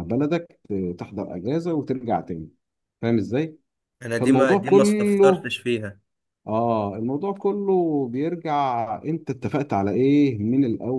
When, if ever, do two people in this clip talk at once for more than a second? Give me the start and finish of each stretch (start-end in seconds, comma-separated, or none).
4.2-5.5